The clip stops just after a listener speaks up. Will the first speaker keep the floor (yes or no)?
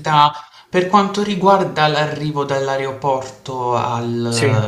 yes